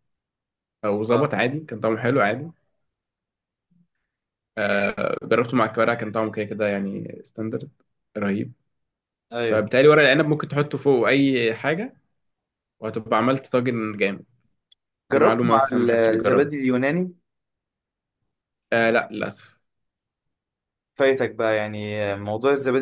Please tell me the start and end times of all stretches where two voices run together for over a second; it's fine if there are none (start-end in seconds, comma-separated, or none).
15.1-16.5